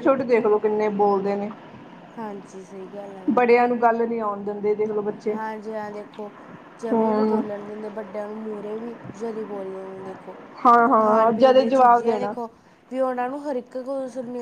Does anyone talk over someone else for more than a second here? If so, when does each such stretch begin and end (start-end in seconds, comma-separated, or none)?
11.0-12.3